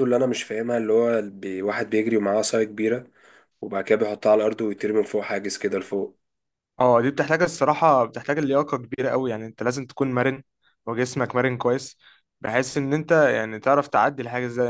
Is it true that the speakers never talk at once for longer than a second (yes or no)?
yes